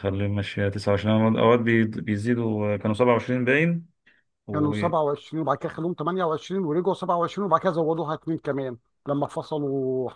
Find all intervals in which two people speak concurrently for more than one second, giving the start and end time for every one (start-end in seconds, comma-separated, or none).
none